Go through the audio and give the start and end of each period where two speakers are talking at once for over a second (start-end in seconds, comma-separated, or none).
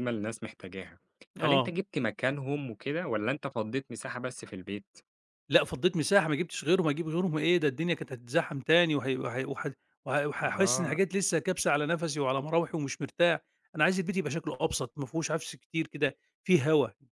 none